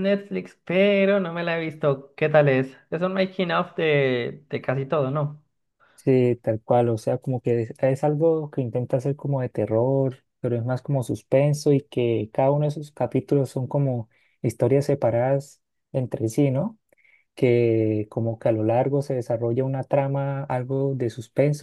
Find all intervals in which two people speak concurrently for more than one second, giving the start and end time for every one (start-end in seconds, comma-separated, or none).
none